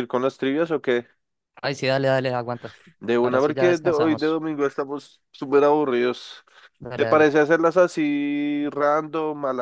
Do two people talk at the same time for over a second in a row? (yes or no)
yes